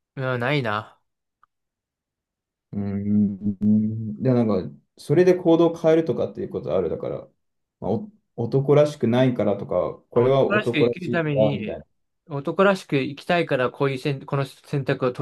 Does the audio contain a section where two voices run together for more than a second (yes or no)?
yes